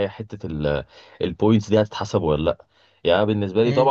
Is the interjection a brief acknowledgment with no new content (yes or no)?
yes